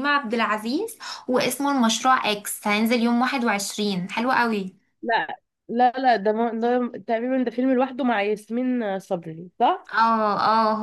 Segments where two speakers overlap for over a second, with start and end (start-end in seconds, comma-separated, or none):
none